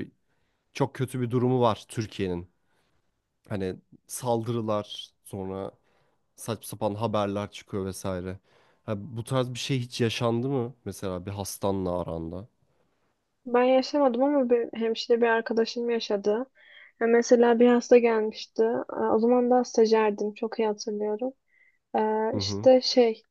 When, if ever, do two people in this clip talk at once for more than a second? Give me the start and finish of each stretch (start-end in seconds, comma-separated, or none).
none